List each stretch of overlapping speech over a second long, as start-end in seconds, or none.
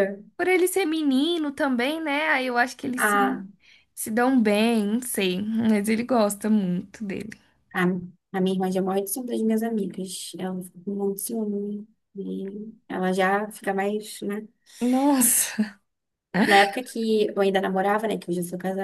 none